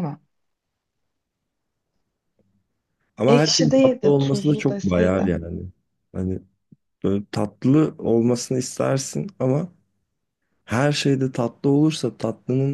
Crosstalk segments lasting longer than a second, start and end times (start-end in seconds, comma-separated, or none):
3.3-5.3